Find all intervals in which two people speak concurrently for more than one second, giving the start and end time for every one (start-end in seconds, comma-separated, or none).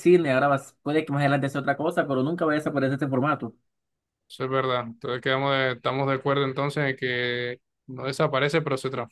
none